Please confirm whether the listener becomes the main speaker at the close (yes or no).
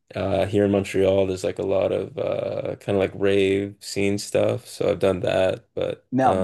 yes